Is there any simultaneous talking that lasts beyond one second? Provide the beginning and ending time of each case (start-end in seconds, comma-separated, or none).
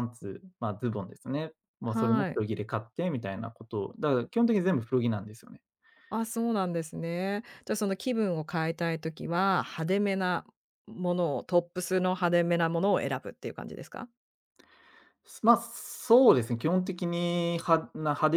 none